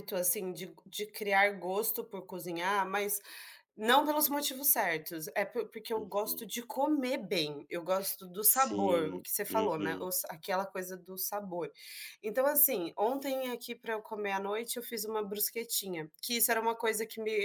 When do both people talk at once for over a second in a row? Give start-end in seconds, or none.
8.5-10.1